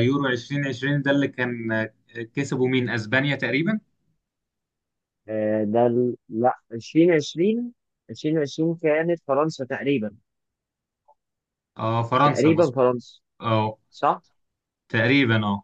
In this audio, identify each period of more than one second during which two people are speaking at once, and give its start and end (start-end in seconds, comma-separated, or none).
none